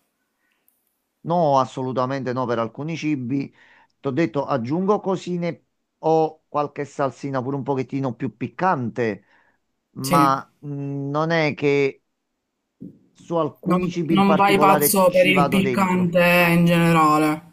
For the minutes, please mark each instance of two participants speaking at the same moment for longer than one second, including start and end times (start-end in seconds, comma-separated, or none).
13.6-16.2